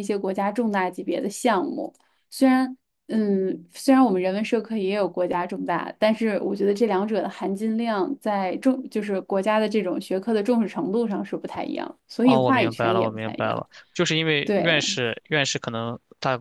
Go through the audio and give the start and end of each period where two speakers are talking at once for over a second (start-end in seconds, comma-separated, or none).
12.2-13.6